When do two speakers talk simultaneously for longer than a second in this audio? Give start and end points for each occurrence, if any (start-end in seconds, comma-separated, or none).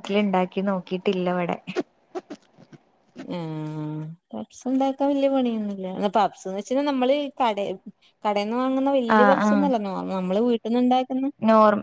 none